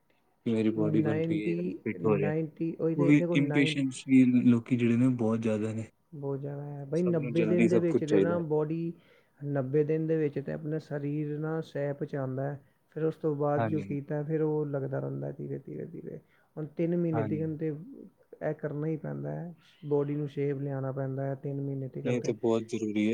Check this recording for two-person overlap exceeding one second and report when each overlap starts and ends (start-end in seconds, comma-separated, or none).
6.9-8.4